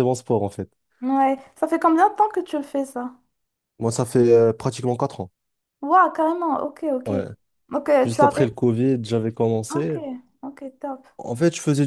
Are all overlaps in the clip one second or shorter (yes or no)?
yes